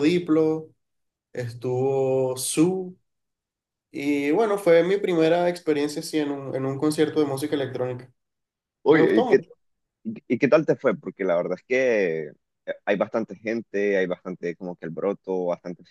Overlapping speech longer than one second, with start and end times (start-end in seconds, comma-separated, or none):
none